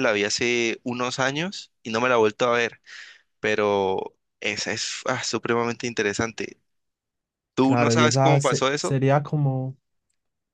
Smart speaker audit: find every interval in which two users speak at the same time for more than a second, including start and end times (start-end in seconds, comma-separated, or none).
7.6-9.0